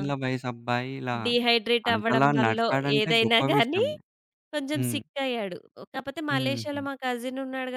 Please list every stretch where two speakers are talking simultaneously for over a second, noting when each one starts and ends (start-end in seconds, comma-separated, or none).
1.9-3.8